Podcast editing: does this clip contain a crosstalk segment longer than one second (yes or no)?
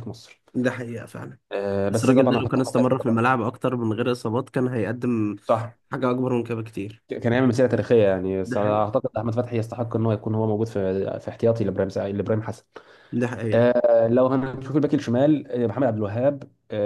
yes